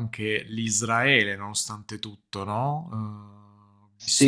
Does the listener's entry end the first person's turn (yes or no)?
yes